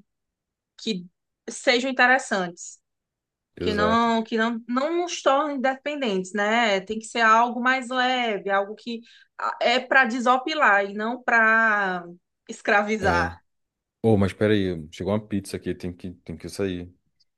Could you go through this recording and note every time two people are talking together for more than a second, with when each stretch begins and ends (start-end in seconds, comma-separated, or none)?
none